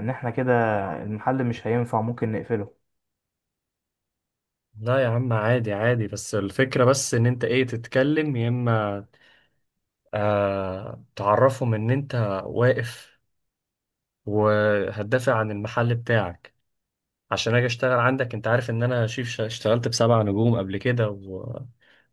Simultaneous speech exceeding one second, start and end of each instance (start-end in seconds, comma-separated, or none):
none